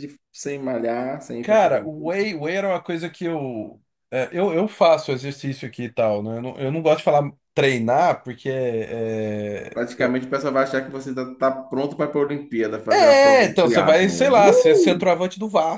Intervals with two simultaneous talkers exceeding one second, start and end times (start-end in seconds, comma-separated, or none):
12.9-15.2